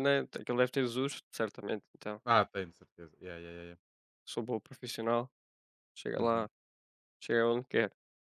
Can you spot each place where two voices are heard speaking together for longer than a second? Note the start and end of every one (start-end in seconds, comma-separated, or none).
none